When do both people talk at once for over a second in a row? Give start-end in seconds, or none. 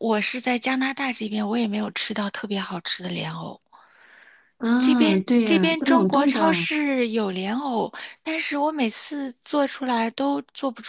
4.8-6.7